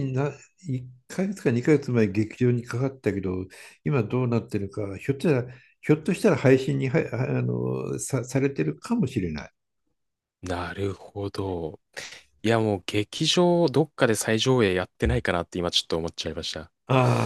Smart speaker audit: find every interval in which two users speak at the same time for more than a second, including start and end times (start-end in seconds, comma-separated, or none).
none